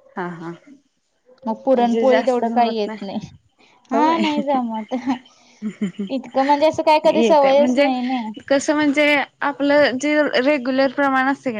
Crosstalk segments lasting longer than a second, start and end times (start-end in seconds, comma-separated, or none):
1.6-2.9